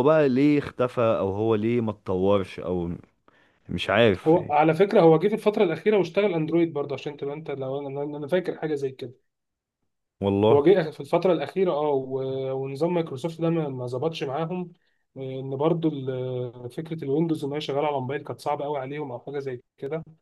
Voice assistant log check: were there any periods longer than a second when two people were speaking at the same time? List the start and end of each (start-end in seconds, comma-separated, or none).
none